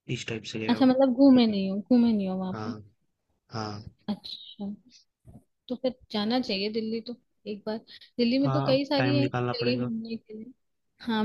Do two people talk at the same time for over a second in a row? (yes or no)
yes